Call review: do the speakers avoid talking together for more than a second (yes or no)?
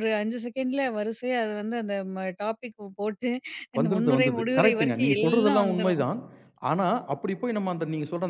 no